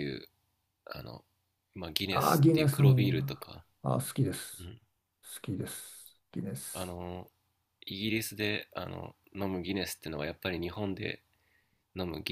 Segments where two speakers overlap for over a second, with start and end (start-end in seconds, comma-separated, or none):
2.1-3.5